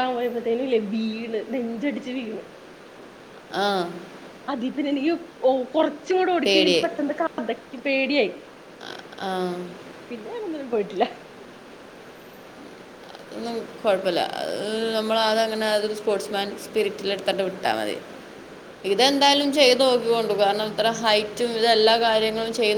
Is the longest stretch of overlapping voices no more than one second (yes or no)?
yes